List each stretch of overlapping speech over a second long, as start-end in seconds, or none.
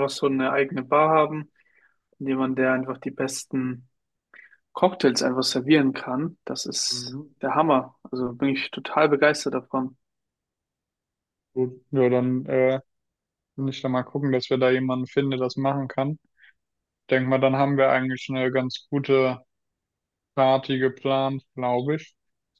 none